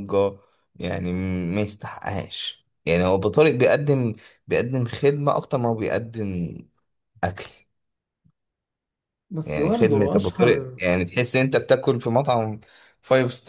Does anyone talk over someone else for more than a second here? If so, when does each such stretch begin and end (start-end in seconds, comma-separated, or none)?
9.4-10.8